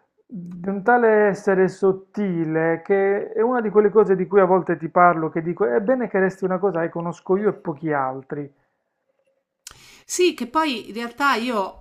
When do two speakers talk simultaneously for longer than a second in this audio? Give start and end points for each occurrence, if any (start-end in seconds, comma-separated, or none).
none